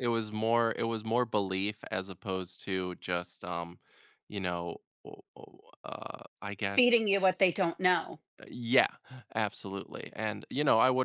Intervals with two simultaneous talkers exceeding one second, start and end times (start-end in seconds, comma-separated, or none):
none